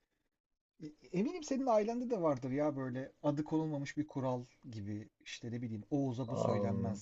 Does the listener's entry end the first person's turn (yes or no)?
no